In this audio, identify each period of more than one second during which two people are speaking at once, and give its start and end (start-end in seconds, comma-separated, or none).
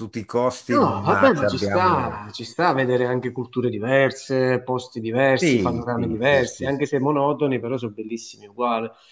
0.7-2.2, 5.4-6.8